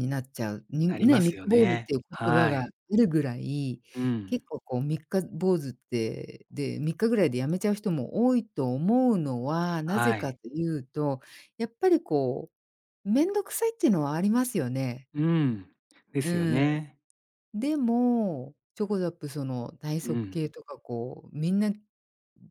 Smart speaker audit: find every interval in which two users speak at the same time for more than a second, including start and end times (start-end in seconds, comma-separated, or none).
0.9-2.7